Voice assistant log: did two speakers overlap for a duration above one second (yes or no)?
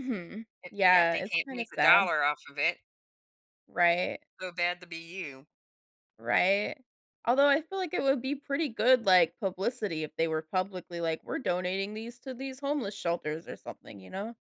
yes